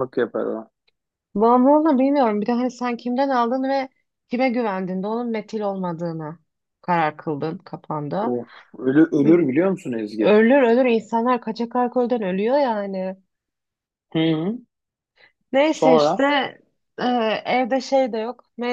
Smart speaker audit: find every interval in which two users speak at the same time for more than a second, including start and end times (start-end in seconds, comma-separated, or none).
none